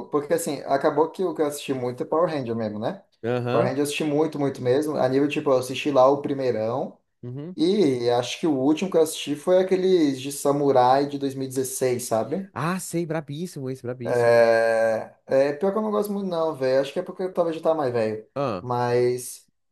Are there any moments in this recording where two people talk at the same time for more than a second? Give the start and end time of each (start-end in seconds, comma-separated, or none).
none